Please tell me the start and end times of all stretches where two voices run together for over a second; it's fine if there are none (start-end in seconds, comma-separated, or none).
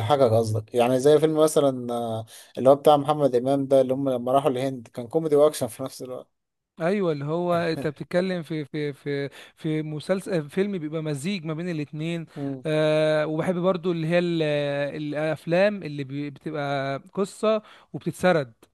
none